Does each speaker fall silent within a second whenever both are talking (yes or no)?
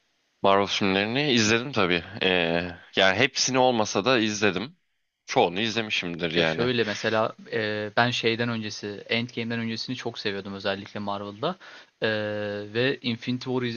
yes